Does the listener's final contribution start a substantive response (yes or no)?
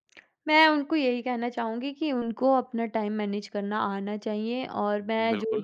no